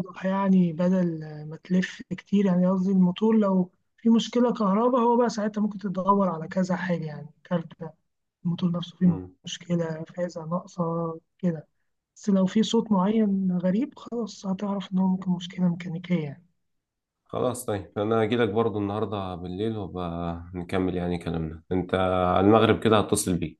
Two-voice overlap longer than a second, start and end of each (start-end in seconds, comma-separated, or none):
none